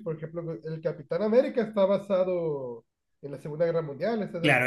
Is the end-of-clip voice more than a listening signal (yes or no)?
yes